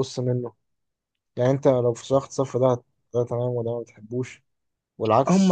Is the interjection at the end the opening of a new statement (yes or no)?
yes